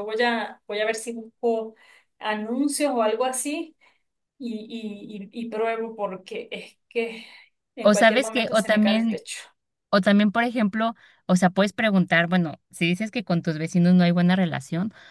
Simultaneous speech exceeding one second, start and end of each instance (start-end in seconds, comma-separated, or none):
7.8-9.2